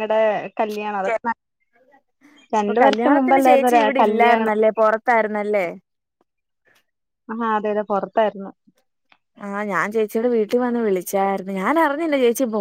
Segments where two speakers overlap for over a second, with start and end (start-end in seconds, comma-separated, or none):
2.6-4.5